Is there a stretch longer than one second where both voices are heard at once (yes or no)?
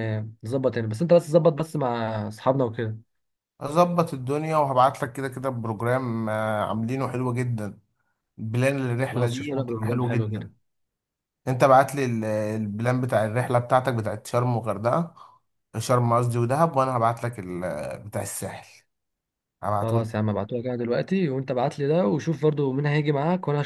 yes